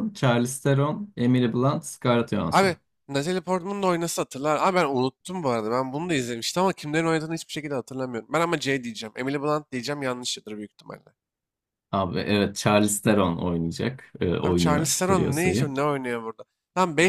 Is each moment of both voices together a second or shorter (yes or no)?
no